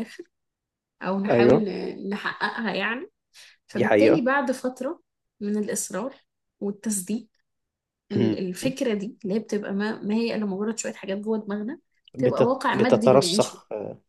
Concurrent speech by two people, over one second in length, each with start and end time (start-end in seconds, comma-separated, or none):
12.2-13.6